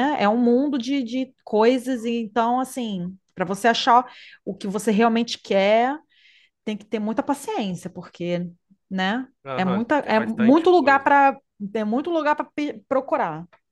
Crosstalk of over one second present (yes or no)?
yes